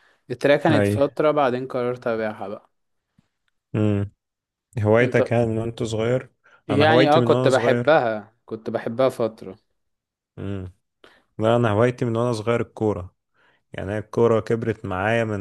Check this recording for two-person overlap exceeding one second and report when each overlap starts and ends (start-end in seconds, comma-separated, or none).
6.7-8.0